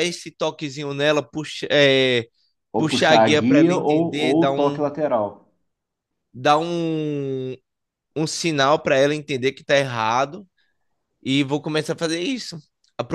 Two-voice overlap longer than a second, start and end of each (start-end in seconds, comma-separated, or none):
2.8-4.9